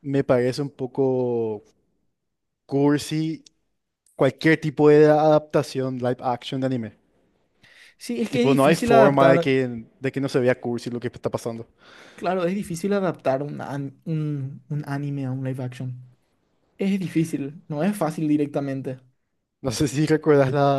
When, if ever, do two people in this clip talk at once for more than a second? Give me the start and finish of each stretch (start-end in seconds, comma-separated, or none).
8.3-9.6